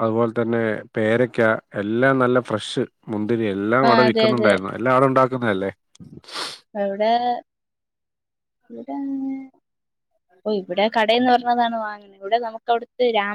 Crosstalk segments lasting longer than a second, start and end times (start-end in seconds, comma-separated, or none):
none